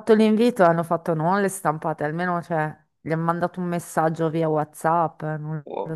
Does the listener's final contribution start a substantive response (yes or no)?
yes